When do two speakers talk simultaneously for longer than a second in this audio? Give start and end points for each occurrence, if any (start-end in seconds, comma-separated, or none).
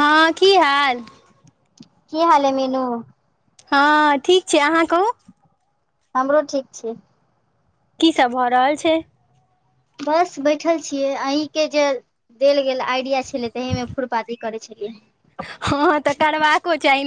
none